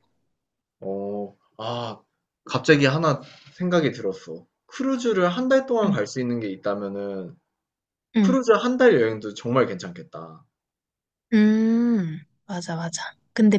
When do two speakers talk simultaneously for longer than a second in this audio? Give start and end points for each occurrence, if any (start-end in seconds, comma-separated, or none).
none